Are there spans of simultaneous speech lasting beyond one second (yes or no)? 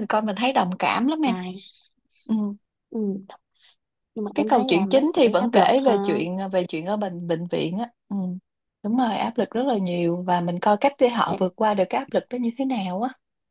yes